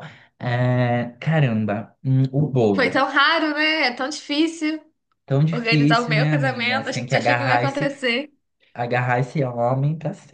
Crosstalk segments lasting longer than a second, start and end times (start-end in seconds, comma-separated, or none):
5.5-7.9